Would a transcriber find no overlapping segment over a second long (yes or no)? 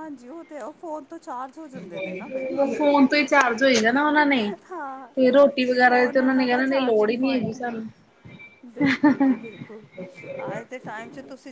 yes